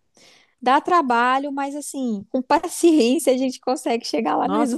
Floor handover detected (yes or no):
yes